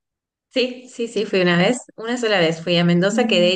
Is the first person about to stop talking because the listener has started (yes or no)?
no